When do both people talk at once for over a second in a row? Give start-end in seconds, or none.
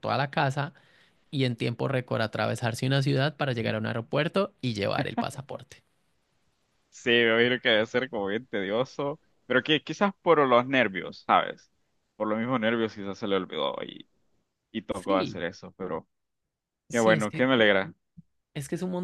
none